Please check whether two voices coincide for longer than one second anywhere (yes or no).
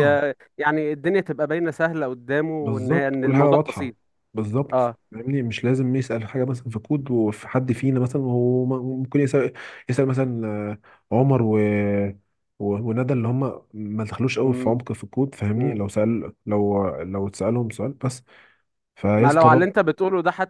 yes